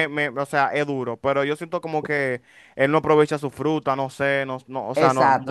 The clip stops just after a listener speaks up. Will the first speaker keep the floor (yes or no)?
no